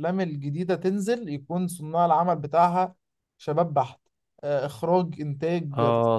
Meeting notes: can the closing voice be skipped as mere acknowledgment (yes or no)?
no